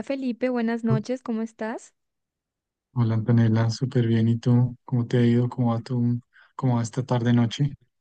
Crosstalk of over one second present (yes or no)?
no